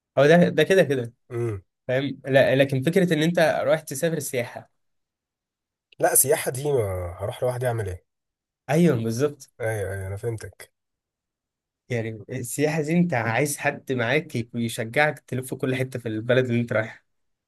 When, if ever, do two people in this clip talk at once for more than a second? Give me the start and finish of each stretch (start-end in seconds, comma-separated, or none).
none